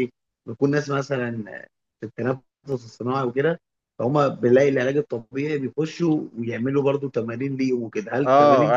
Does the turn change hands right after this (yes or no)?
yes